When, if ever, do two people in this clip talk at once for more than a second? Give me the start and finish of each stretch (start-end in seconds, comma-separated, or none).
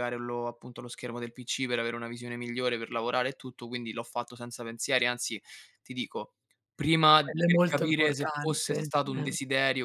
7.2-9.3